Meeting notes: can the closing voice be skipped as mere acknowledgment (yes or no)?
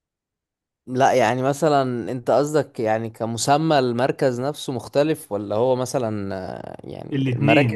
no